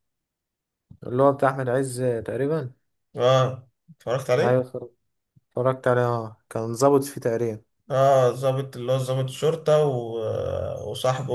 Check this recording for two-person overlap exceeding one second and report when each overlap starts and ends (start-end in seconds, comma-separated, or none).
none